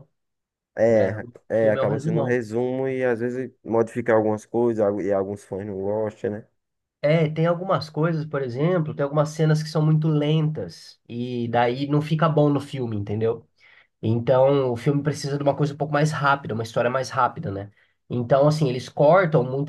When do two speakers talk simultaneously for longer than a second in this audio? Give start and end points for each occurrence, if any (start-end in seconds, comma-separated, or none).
0.9-2.4